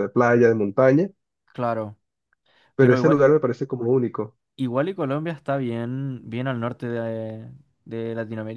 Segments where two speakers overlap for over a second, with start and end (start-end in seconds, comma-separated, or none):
none